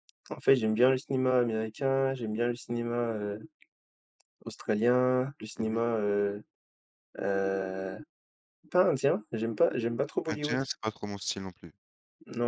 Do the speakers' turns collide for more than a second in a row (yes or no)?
no